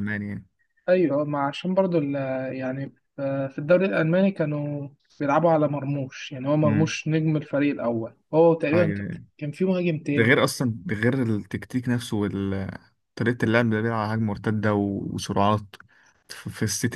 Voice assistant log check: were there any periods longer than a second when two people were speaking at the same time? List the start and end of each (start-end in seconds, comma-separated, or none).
none